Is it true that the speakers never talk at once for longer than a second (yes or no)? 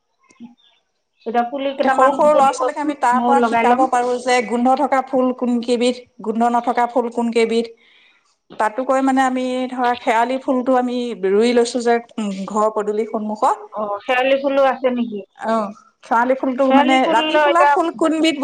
no